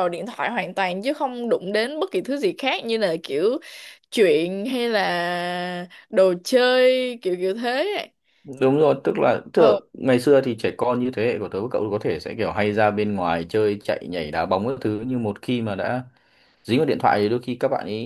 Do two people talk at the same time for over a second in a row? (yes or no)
no